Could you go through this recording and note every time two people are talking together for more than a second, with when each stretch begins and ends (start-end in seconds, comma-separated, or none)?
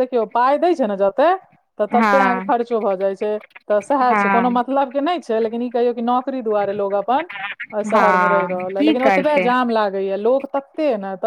8.0-9.5